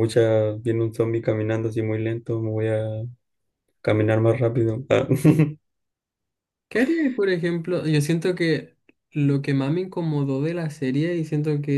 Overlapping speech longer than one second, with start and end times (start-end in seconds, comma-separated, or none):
none